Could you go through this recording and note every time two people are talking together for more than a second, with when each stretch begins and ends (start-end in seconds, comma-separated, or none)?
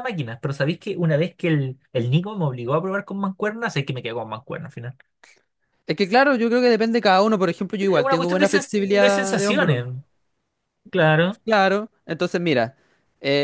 7.8-9.8